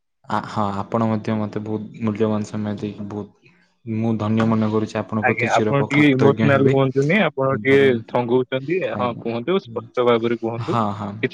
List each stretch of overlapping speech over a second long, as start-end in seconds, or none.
5.3-6.7